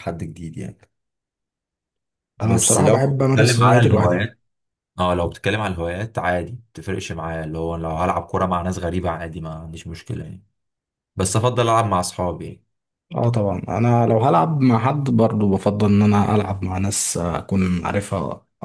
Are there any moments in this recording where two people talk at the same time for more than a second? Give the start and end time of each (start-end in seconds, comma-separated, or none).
2.4-4.4